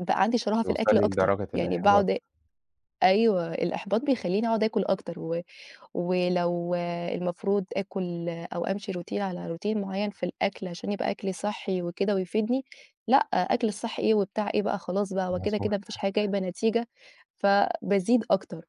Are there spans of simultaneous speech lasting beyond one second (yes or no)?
yes